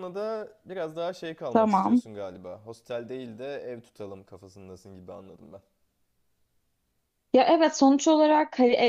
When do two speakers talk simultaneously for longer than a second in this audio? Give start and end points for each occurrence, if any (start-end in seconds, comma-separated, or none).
none